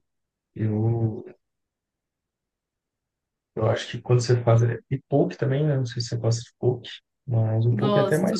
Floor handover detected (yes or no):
yes